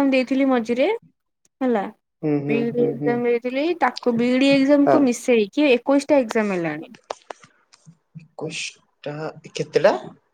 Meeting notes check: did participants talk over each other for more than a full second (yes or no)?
no